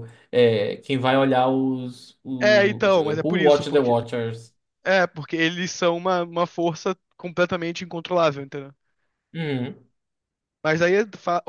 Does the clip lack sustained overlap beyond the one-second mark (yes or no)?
no